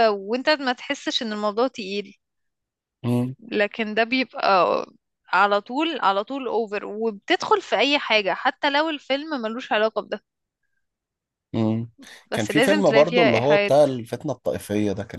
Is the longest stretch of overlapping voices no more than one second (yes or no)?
no